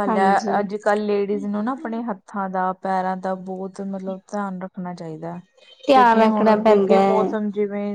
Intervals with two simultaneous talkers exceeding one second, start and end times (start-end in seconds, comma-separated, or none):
5.9-7.3